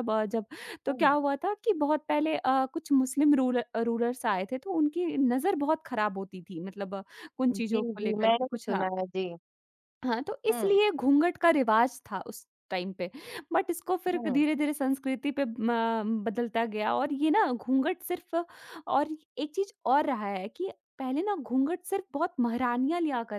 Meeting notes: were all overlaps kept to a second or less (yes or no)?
no